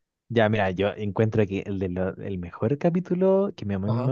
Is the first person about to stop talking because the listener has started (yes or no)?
no